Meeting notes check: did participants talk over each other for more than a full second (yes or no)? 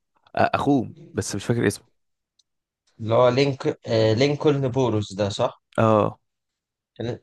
no